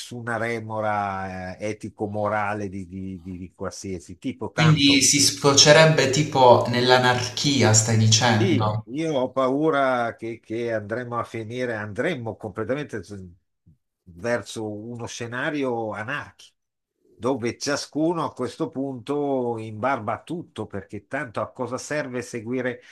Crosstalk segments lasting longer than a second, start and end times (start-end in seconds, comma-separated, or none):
none